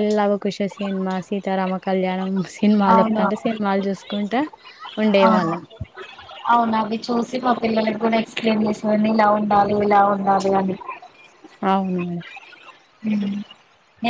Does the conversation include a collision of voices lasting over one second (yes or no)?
no